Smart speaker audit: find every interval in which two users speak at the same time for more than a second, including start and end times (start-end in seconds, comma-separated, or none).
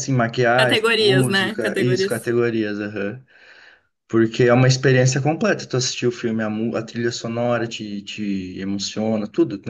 0.6-2.3